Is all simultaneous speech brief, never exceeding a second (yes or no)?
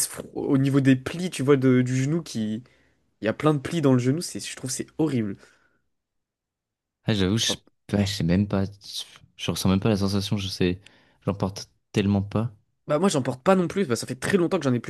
yes